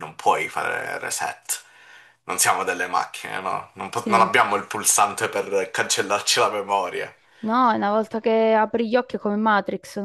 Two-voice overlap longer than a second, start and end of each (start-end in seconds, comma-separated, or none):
none